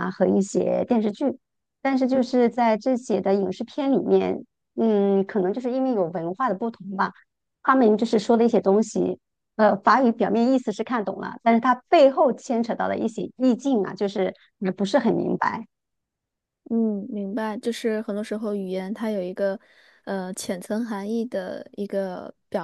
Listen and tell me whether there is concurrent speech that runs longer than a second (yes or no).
no